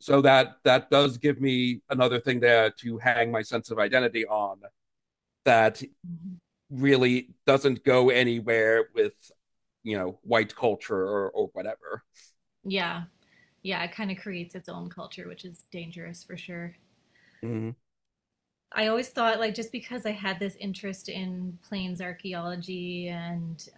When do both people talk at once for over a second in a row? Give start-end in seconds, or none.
none